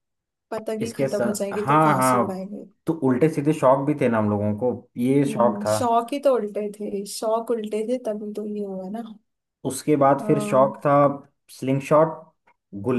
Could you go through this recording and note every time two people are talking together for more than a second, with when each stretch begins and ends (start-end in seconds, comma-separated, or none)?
0.8-2.4